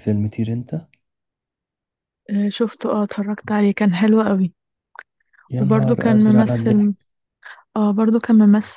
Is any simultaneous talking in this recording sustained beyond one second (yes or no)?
yes